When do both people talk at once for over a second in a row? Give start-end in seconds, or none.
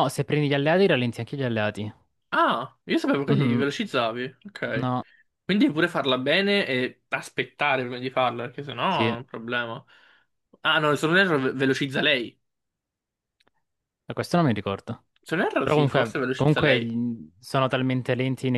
15.6-16.9